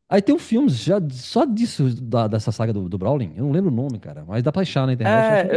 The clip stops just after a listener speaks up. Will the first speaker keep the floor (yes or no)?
no